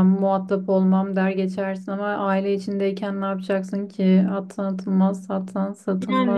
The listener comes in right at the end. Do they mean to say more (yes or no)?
yes